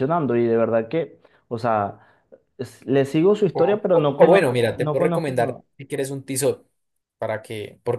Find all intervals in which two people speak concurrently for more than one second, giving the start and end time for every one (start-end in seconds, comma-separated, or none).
3.5-5.6